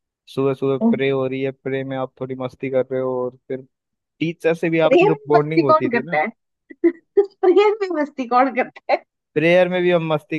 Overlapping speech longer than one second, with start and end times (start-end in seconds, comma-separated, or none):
4.9-6.2